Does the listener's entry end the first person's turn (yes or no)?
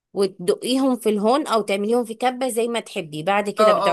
yes